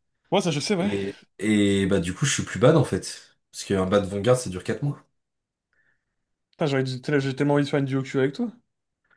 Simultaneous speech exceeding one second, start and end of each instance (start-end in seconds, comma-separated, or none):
none